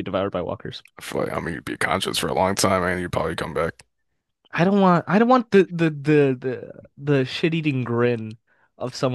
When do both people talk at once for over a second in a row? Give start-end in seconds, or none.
none